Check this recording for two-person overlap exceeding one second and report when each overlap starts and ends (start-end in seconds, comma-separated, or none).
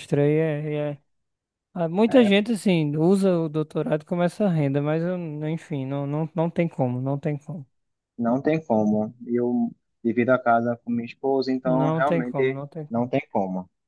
11.6-13.1